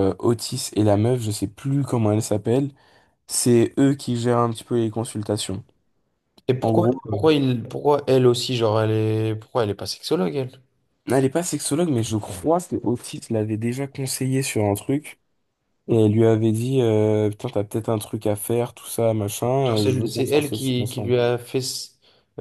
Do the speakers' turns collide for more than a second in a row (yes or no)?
yes